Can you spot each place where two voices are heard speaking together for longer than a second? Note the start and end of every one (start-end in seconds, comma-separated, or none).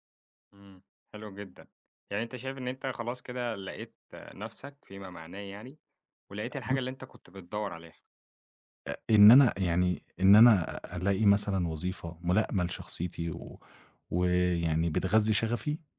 none